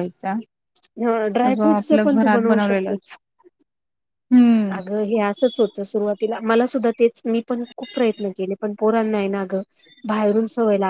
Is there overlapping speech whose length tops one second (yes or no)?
yes